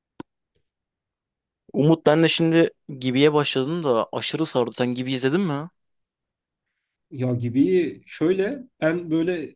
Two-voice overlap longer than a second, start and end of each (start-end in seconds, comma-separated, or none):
none